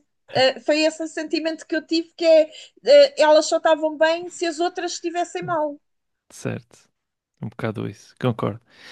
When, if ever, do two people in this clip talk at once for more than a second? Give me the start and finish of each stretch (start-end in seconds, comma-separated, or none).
none